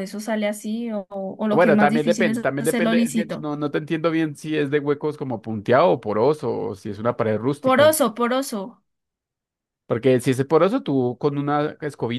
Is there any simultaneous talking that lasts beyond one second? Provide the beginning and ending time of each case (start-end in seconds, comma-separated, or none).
1.5-3.5